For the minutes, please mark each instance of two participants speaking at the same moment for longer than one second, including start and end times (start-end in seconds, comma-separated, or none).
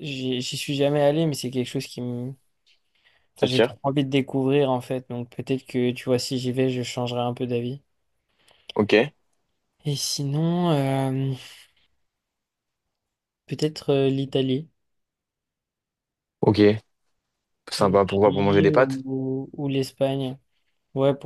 17.8-19.0